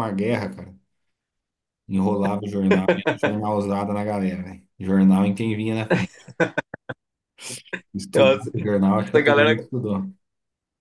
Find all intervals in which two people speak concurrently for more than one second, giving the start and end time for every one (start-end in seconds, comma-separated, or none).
8.1-9.7